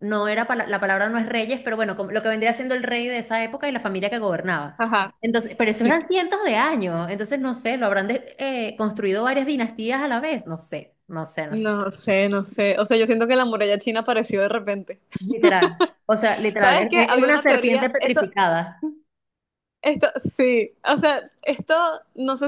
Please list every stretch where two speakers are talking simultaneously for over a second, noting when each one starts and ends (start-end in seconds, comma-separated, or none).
16.6-18.2